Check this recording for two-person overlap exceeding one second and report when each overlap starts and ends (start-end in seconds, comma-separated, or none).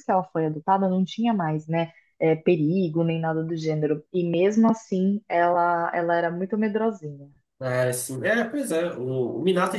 none